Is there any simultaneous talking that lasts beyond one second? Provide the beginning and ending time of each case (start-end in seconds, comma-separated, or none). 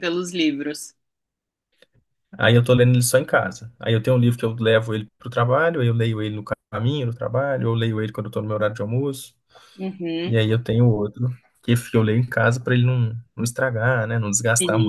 none